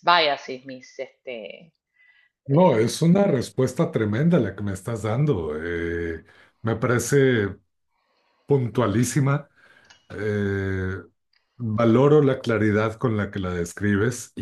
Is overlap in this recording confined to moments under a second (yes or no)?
yes